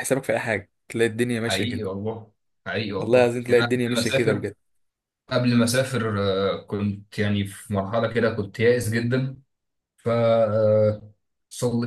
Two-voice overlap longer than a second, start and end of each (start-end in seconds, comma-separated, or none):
3.0-4.5